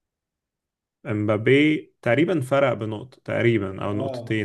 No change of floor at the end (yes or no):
no